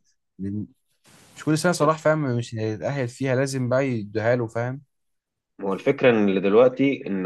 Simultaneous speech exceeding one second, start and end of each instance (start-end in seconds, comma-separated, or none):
none